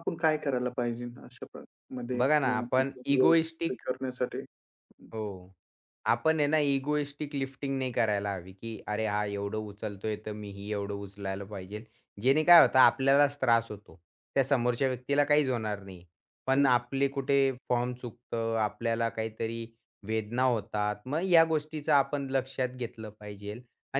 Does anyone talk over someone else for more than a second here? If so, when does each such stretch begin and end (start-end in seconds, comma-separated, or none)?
2.2-3.8